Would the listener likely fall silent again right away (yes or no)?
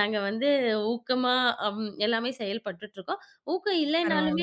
yes